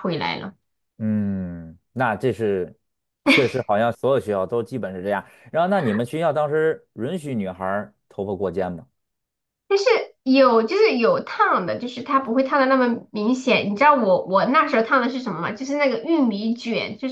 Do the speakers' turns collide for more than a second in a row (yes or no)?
no